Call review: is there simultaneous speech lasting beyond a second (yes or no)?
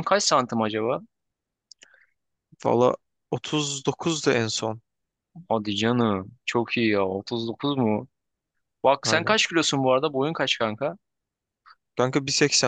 no